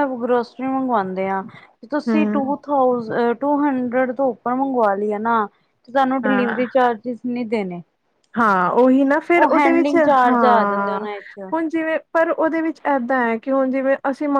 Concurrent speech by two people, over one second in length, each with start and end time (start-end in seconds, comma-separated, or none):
9.4-11.0